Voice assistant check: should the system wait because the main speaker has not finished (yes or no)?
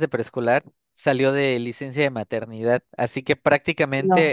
yes